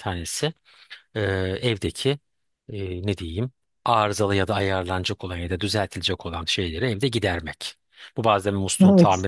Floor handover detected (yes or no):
no